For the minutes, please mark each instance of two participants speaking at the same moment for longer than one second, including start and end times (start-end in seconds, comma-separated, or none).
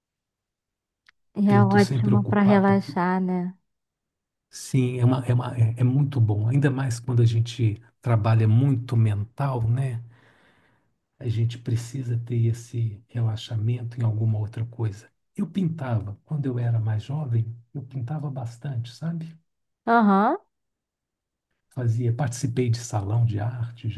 1.5-3.0